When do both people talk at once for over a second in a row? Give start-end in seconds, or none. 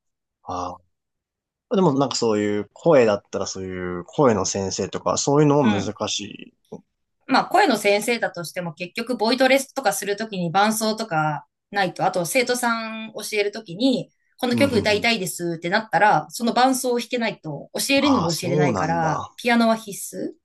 18.0-19.3